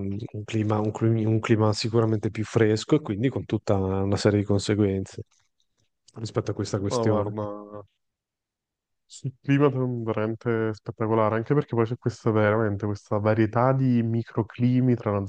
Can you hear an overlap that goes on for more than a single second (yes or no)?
no